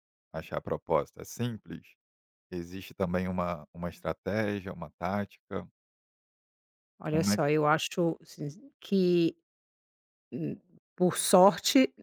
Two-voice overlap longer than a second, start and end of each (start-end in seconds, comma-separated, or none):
none